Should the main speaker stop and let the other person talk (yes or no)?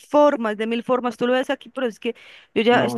no